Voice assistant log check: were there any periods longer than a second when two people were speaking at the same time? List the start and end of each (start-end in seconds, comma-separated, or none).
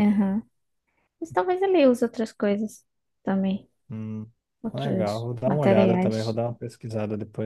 4.7-6.4